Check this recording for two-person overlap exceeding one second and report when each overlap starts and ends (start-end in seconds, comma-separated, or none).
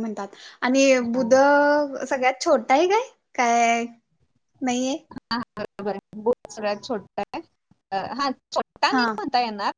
none